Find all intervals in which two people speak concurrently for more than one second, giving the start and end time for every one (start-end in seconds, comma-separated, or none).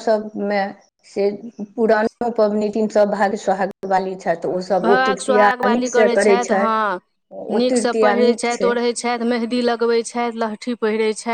4.9-6.8